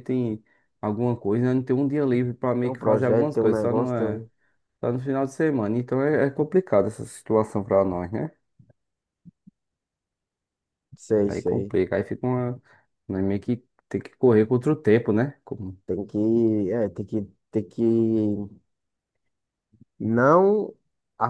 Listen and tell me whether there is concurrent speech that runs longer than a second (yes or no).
yes